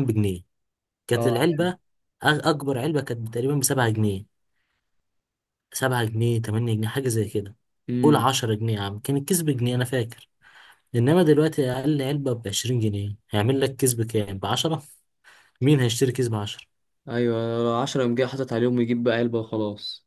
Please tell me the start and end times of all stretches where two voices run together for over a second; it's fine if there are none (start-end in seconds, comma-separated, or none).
none